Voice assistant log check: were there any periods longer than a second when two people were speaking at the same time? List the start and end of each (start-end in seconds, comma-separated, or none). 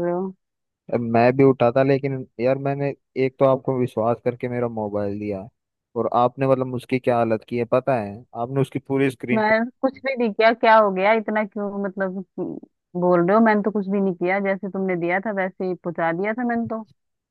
none